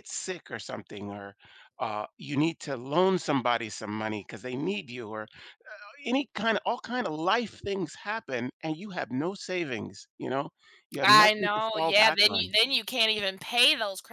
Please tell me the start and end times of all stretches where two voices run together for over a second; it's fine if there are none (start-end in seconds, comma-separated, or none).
11.0-12.5